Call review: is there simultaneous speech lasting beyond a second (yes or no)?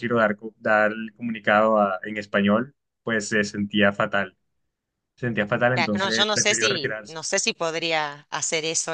yes